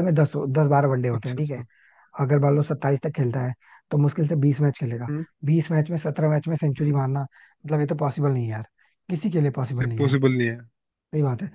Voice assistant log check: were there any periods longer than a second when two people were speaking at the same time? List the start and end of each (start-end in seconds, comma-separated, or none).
none